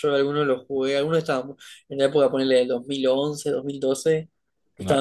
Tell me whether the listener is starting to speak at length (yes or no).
no